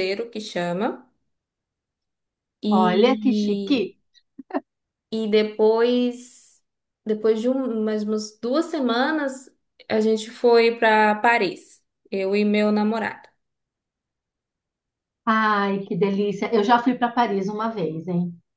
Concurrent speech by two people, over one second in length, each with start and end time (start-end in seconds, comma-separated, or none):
2.7-3.9